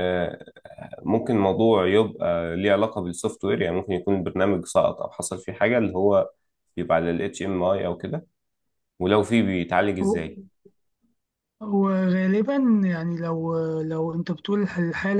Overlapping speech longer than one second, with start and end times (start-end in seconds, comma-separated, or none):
none